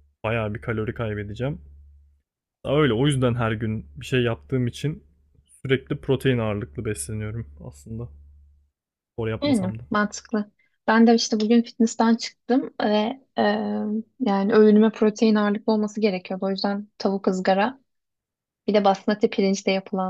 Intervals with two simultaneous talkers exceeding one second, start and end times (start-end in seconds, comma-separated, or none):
none